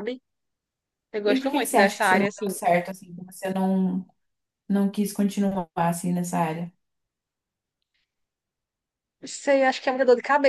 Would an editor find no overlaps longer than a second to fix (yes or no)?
no